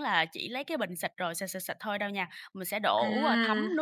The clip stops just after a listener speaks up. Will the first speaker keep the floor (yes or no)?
yes